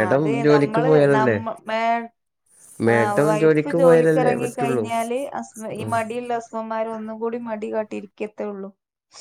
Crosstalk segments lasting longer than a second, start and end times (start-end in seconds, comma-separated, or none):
2.9-4.8